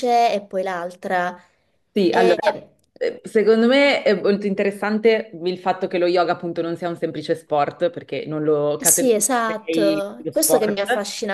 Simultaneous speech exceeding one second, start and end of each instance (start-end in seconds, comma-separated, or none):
8.8-10.8